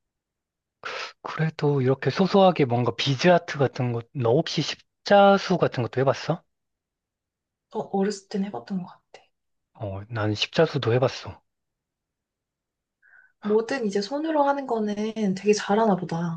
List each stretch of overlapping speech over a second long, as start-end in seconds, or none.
none